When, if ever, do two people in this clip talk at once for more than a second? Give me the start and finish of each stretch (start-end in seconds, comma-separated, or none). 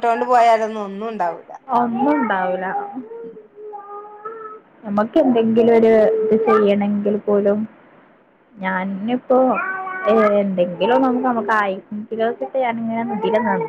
none